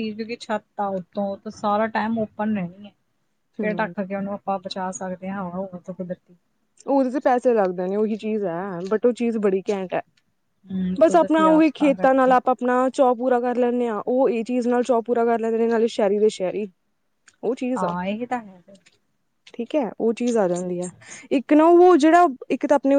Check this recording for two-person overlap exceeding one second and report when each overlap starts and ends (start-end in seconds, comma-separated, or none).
11.0-12.4